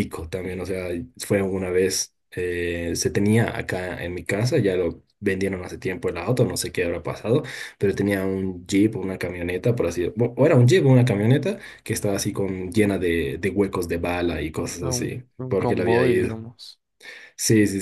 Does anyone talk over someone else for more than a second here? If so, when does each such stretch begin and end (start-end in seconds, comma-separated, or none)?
14.8-16.4